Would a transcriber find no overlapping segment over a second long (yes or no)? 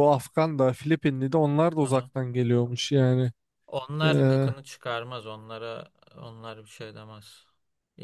yes